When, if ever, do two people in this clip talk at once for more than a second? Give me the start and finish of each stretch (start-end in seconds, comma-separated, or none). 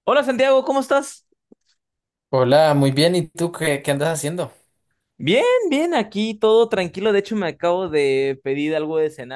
none